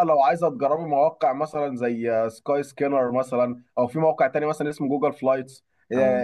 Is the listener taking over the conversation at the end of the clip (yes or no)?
no